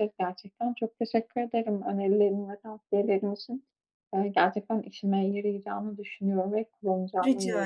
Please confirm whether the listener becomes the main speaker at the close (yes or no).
yes